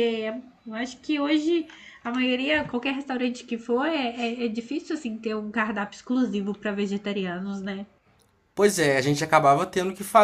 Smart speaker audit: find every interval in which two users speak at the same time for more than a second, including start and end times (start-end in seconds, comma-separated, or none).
none